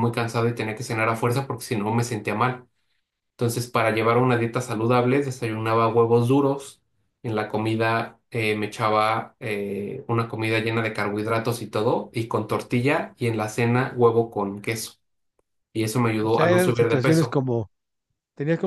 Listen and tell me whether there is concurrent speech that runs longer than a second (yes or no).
yes